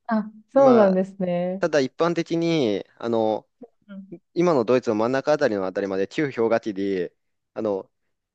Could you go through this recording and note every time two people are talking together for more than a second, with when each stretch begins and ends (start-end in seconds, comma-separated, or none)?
none